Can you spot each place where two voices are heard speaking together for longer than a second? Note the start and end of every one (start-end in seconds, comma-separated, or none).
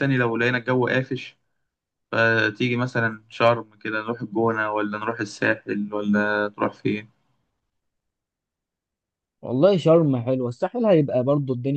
none